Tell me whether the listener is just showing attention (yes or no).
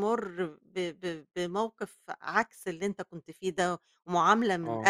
yes